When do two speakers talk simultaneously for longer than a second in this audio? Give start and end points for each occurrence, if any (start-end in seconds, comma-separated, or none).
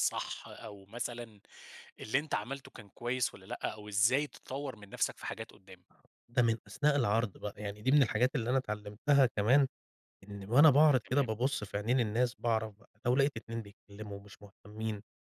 none